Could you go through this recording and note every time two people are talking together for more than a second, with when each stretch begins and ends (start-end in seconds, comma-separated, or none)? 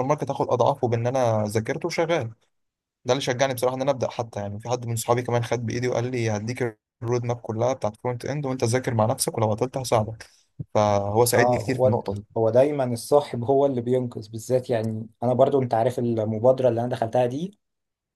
none